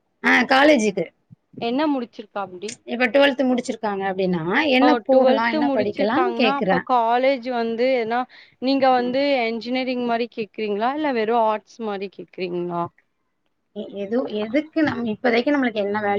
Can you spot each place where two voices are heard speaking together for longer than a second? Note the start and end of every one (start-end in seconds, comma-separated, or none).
4.8-6.8